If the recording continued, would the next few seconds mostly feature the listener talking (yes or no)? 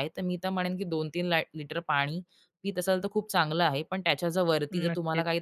no